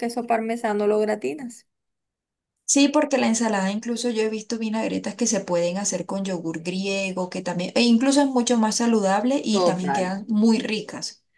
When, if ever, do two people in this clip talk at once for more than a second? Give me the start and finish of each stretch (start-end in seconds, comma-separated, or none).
none